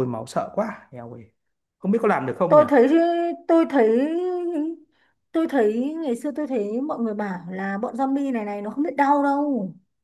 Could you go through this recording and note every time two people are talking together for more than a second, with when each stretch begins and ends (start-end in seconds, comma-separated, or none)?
none